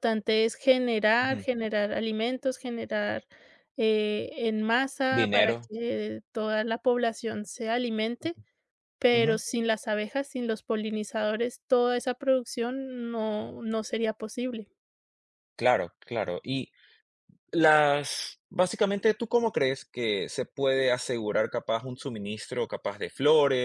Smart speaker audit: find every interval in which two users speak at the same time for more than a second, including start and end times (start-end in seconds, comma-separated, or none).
none